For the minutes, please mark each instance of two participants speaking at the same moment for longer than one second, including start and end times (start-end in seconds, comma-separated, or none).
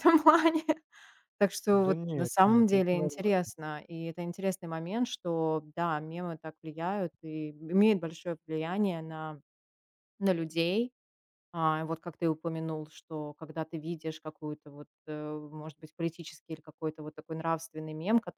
1.7-3.3